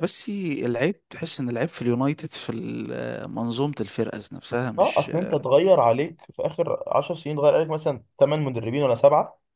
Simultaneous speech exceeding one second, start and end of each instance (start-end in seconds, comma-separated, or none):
none